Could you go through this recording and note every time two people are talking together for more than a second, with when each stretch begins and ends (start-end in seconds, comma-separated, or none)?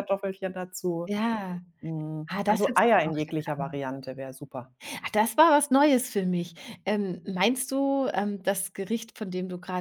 2.3-3.8